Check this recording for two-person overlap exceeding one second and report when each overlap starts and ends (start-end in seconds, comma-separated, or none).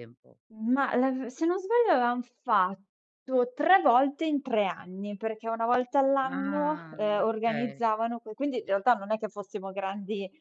6.2-7.8